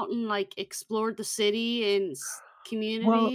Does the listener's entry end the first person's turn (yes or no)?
yes